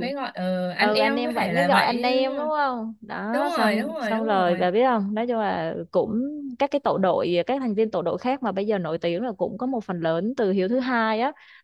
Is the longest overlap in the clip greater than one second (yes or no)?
yes